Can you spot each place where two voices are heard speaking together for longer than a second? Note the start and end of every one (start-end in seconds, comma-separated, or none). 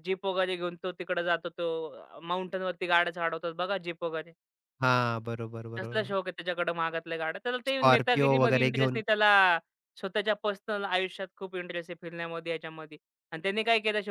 7.7-9.0